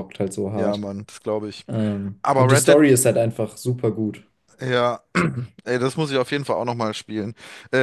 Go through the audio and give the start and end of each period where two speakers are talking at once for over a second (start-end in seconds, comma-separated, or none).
none